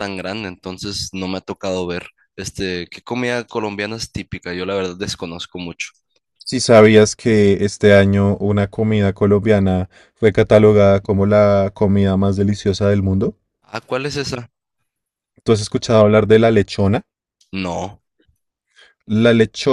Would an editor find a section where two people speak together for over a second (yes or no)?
no